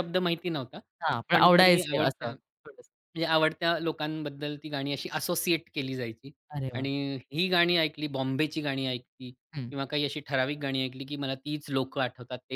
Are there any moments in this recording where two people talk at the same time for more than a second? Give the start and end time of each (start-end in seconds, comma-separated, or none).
1.3-2.9